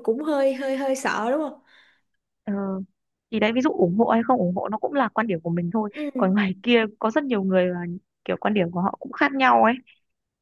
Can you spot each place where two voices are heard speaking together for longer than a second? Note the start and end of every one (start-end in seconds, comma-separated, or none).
none